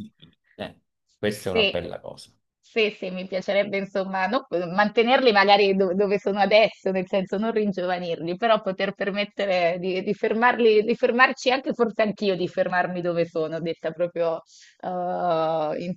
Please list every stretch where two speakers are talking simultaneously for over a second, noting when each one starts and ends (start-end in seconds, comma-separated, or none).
none